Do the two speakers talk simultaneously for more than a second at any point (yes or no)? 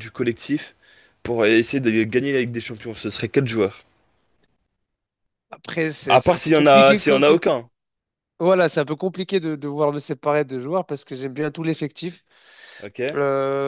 yes